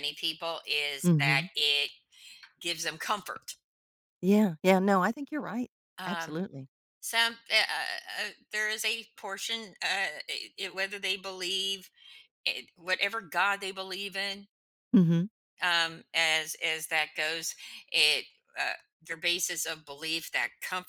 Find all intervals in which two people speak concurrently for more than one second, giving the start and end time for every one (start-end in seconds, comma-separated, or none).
none